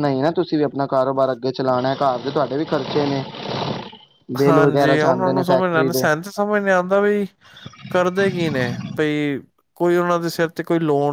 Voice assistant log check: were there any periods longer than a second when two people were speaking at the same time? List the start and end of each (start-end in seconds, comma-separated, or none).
4.5-6.0